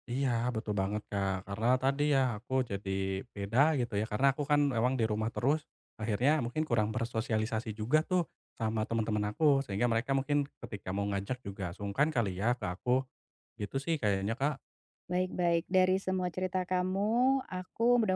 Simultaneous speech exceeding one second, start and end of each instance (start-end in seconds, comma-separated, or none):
none